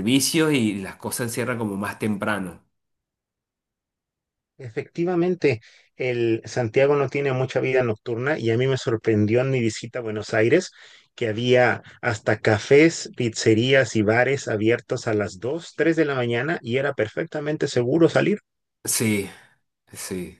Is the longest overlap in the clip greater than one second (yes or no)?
no